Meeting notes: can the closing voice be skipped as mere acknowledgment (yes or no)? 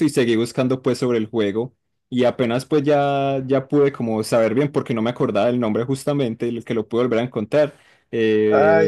no